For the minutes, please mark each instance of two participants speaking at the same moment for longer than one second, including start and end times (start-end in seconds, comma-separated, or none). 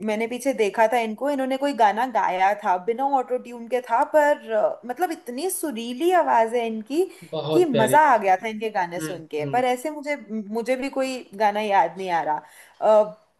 7.5-9.6